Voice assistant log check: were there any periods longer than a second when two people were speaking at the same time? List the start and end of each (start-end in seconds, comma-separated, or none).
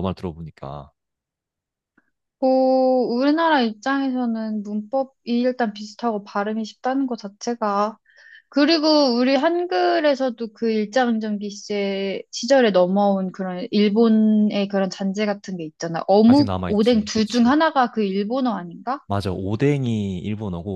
16.2-17.6